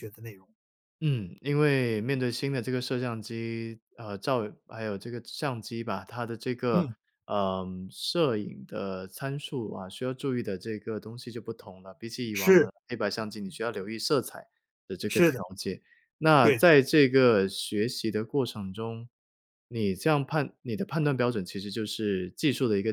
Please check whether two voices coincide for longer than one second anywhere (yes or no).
no